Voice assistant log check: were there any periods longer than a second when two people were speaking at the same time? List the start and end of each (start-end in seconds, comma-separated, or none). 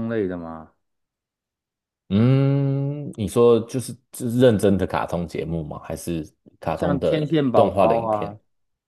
6.8-8.3